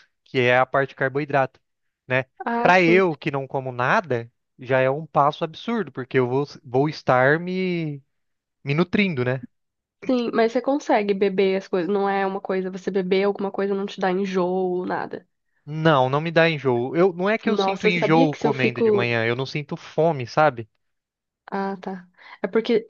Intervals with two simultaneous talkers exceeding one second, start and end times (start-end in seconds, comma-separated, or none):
17.4-19.1